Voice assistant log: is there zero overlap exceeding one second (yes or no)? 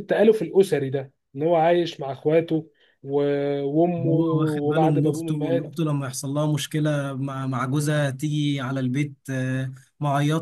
no